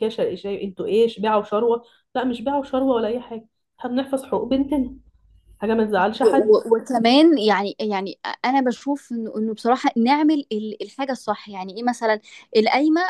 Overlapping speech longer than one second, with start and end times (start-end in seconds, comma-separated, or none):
none